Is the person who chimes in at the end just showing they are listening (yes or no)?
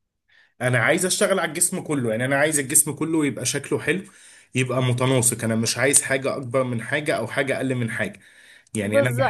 no